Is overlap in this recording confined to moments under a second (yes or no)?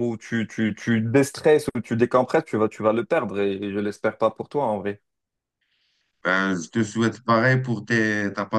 yes